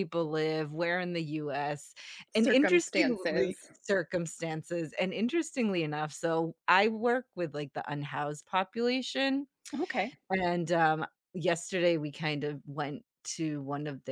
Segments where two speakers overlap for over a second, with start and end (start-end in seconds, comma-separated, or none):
2.3-3.7